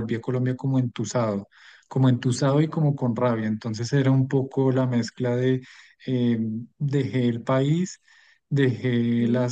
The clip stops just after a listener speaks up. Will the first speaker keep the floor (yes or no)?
yes